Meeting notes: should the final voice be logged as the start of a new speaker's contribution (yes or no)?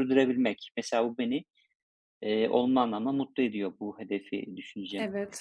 yes